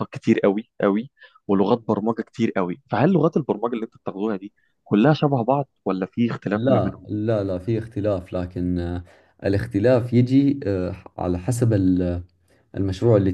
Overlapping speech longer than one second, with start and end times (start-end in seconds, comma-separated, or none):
none